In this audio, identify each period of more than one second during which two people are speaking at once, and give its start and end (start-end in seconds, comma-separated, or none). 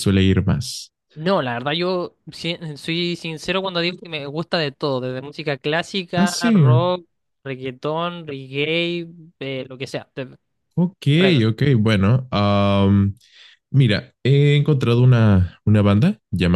none